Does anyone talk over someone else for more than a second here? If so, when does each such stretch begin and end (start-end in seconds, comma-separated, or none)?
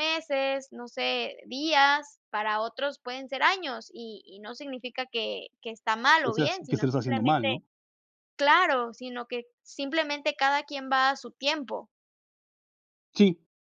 6.2-7.5